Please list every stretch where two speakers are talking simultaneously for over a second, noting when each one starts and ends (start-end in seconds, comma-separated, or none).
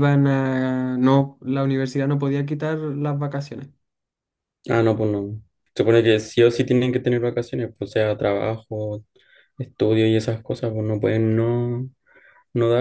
none